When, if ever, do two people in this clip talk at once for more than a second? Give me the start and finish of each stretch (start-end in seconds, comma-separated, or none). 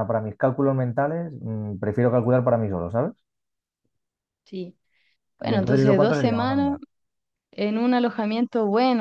5.4-6.8